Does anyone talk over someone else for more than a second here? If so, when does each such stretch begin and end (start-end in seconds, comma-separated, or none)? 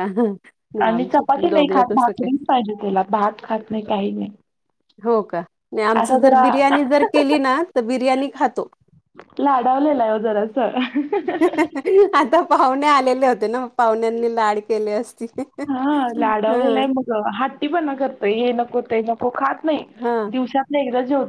0.8-2.3